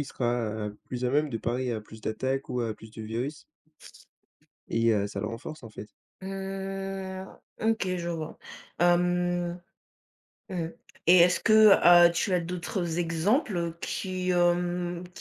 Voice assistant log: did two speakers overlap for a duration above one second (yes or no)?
no